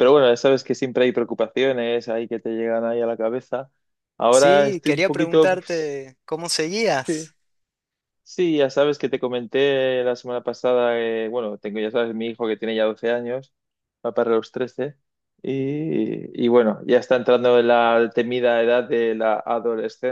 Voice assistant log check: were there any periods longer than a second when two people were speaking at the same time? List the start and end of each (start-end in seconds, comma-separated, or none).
4.3-6.0